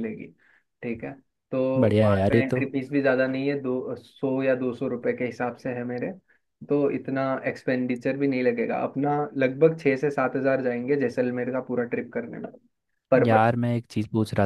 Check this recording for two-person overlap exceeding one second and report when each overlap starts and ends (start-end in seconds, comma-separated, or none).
none